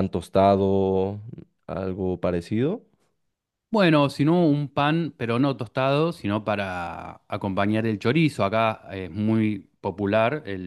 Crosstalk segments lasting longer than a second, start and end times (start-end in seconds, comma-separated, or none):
none